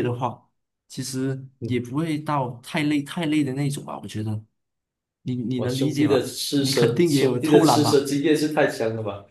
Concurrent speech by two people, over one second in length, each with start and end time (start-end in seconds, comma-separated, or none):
5.5-8.1